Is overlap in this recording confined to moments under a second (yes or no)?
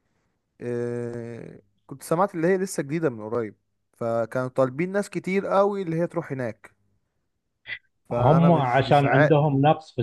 no